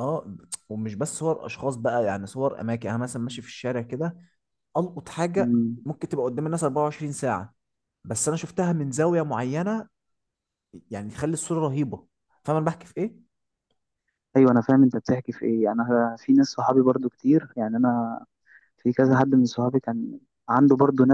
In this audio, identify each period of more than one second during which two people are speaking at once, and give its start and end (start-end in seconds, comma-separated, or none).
none